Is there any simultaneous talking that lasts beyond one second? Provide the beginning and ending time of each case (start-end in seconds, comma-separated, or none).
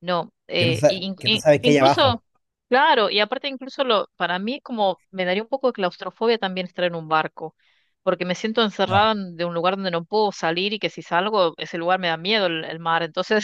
0.6-2.2